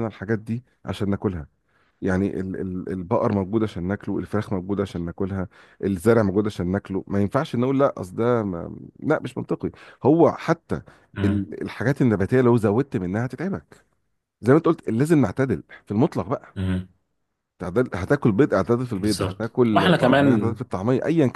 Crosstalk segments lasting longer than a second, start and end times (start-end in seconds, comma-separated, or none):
19.0-20.6